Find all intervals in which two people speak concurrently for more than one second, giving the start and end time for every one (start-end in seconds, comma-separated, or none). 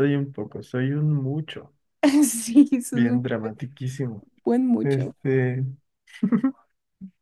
none